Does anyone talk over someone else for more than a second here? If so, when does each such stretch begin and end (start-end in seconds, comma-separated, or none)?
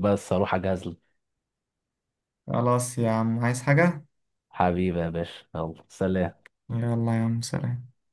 none